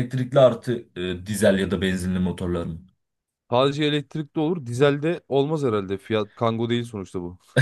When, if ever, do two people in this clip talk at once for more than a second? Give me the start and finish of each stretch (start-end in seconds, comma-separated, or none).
none